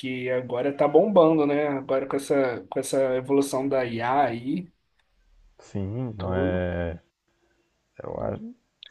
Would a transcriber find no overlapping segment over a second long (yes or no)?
yes